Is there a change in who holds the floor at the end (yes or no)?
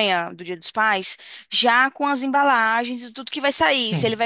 no